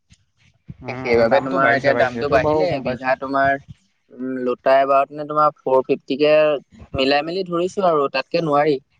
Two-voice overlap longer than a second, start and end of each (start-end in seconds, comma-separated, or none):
0.9-3.1